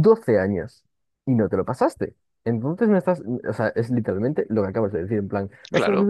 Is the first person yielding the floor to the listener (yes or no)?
yes